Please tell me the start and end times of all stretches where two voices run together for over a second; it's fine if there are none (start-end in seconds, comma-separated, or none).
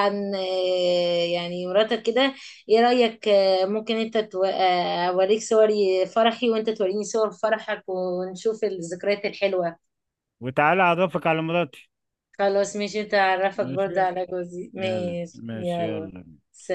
14.8-16.1